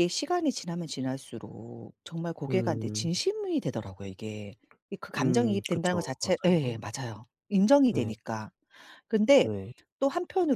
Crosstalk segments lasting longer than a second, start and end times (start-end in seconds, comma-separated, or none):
5.2-6.8